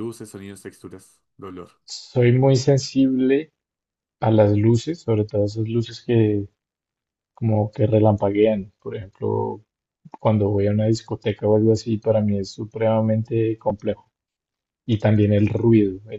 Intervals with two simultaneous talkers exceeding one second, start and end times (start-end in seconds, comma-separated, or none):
none